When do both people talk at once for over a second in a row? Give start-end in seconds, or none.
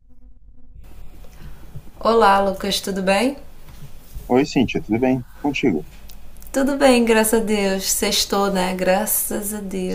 none